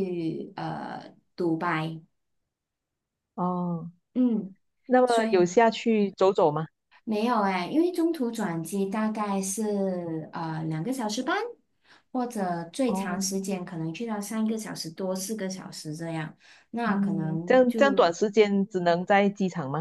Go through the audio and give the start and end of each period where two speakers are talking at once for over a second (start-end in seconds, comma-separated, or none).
16.8-18.1